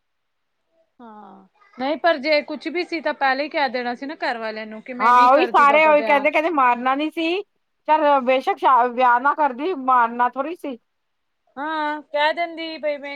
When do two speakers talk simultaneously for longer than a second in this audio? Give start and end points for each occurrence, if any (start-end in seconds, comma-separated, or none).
5.0-6.2